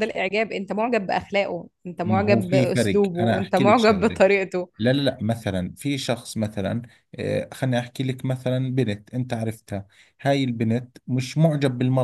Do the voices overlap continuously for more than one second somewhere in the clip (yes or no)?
yes